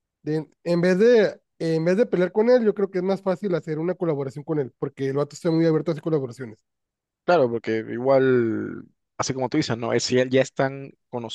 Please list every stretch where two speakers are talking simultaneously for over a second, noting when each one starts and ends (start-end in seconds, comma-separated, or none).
none